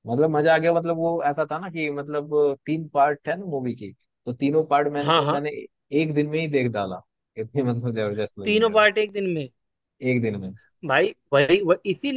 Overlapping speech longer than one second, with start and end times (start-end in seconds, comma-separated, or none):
none